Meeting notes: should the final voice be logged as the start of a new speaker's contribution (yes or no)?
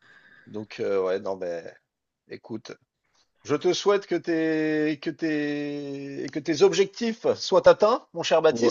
yes